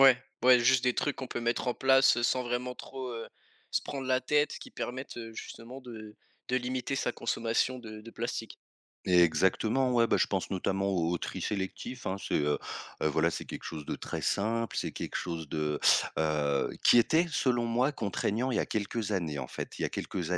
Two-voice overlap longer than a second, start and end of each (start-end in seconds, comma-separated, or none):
none